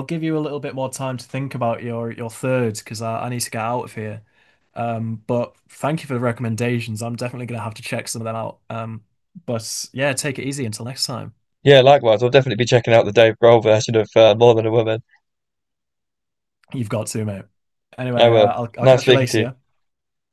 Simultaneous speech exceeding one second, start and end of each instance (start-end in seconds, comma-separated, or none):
18.2-19.5